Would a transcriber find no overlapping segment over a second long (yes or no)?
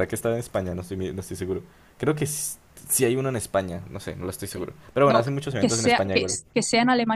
no